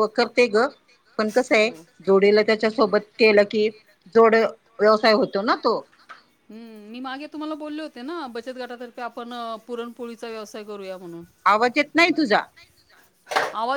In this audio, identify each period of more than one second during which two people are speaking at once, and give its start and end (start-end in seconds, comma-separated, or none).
none